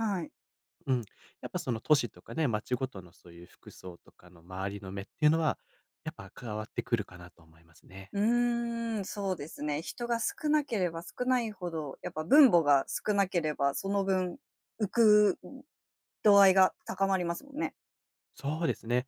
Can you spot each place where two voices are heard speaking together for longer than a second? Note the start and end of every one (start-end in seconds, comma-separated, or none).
none